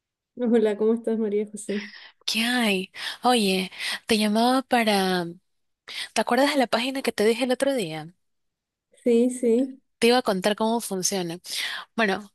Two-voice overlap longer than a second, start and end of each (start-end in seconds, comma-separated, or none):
none